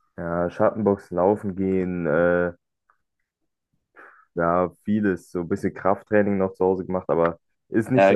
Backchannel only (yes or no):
yes